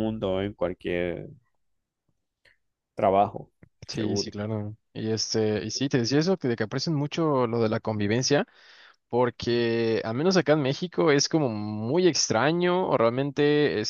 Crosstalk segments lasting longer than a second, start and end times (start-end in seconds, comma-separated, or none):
none